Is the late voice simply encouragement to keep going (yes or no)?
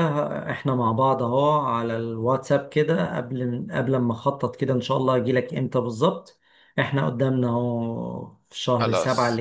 yes